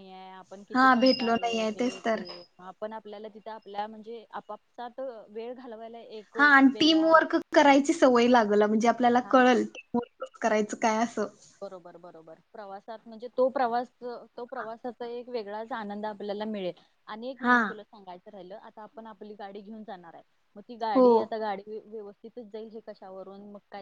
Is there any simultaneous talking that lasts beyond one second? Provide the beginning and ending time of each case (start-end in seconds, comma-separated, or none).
0.7-2.2